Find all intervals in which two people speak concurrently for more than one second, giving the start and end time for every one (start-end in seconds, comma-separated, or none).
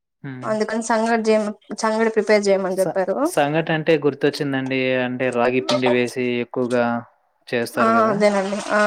none